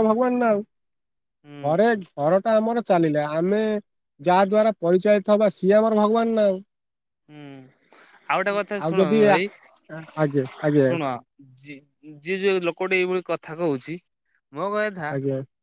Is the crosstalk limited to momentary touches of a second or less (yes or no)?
yes